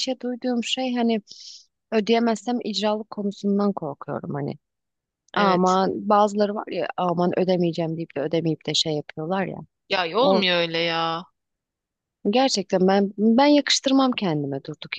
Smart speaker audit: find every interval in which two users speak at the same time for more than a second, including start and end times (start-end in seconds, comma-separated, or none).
none